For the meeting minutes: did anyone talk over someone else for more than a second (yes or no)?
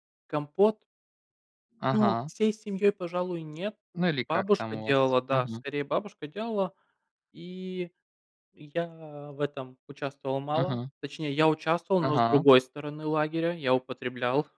yes